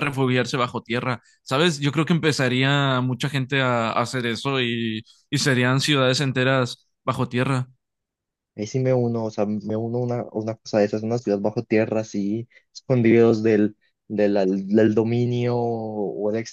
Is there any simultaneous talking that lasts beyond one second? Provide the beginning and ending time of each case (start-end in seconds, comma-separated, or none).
none